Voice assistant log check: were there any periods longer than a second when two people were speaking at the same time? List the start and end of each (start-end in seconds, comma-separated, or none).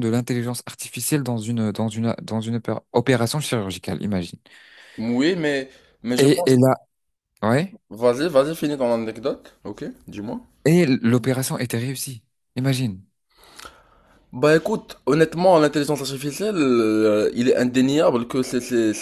none